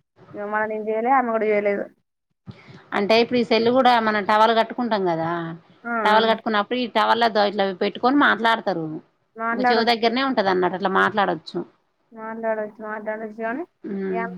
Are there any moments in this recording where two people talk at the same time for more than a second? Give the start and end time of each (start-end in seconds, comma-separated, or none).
none